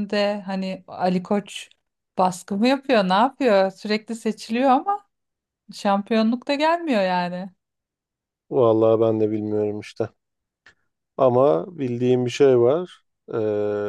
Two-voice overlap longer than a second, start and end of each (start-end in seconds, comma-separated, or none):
none